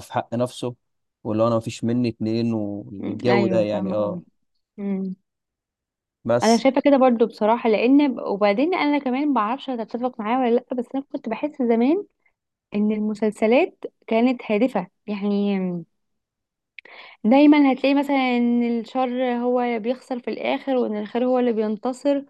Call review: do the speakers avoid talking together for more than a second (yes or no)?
no